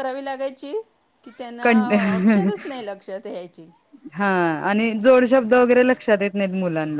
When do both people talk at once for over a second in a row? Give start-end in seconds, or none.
none